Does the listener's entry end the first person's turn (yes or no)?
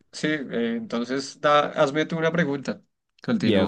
yes